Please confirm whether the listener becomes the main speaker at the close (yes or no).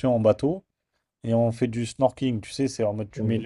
no